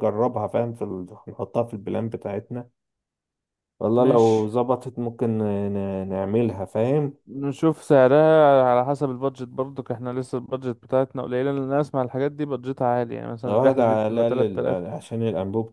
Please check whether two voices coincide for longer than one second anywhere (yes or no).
yes